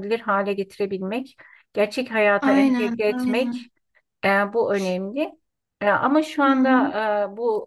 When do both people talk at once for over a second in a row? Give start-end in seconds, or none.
2.4-3.7